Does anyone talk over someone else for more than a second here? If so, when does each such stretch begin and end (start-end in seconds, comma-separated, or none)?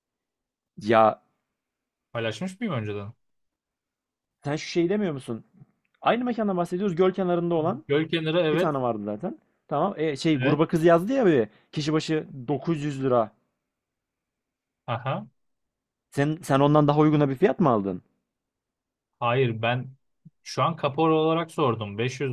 none